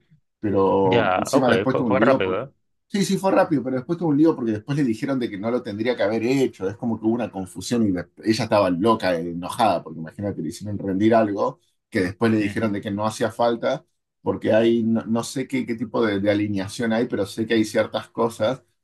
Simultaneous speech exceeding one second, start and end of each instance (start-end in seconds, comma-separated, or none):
0.8-2.5